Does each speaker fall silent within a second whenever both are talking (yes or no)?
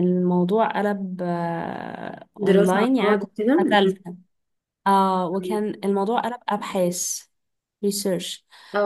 no